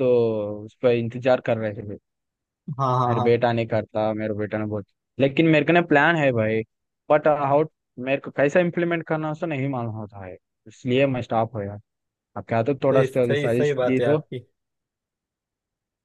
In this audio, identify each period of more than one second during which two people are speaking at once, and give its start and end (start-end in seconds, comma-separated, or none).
12.9-14.2